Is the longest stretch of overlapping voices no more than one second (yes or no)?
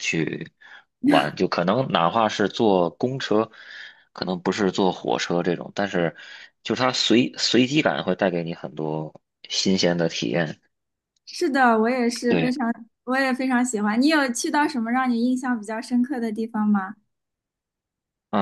yes